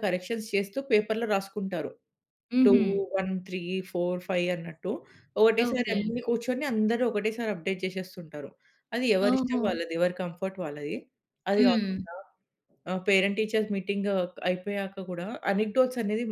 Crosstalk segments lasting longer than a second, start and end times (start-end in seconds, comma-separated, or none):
none